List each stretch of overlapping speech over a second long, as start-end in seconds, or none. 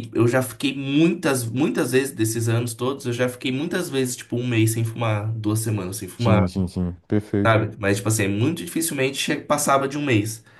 none